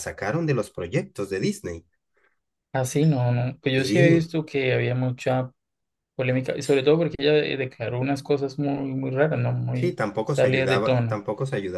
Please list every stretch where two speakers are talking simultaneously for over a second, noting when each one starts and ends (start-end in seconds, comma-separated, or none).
9.7-11.2